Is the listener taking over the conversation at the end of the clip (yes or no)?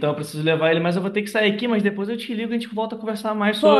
yes